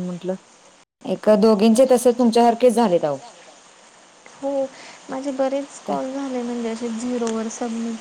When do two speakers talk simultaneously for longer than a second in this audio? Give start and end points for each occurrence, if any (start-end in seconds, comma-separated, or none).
none